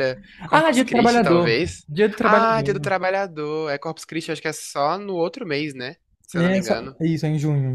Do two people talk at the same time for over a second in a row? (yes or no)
yes